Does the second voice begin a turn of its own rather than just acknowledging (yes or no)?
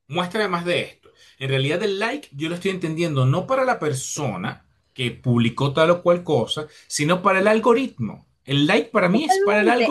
yes